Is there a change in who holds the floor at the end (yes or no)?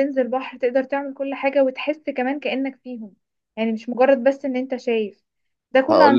no